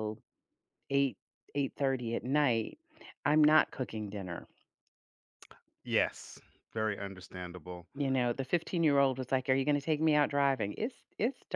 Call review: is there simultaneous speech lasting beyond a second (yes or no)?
no